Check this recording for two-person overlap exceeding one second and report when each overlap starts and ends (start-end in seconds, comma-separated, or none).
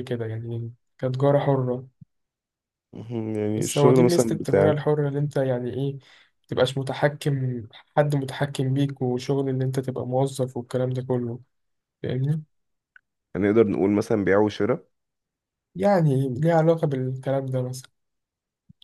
3.6-4.8